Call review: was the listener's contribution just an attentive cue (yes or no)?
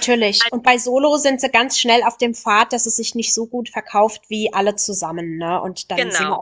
yes